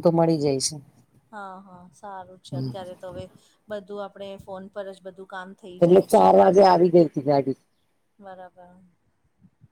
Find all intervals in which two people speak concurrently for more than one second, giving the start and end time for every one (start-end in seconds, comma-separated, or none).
none